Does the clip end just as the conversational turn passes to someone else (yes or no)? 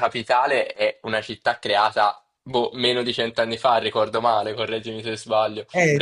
yes